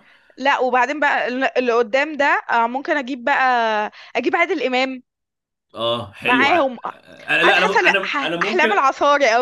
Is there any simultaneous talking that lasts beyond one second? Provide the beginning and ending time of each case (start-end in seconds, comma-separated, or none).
7.4-8.7